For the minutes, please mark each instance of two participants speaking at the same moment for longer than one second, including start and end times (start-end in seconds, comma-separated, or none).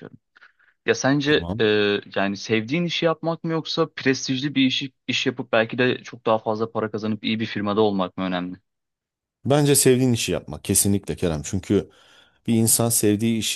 none